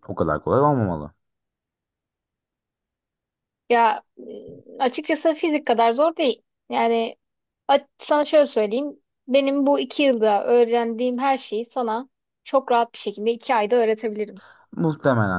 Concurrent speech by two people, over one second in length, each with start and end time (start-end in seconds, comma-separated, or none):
none